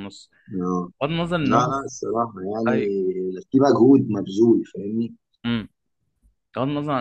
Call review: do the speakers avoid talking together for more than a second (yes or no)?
yes